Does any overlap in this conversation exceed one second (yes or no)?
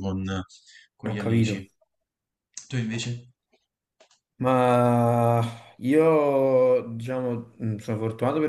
no